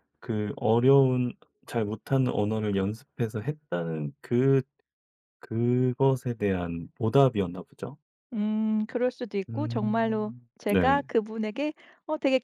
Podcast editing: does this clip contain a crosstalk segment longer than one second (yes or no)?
yes